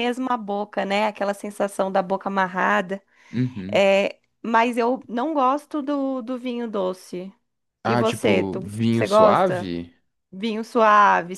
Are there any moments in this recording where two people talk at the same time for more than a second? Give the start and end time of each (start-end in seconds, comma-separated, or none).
7.8-9.7